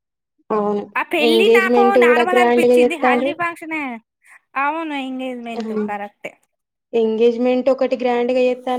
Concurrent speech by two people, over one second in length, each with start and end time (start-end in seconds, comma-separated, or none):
1.3-3.3